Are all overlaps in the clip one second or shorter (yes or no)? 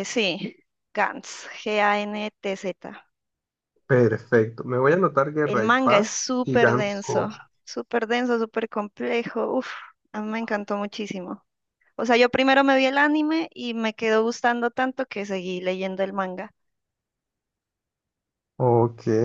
no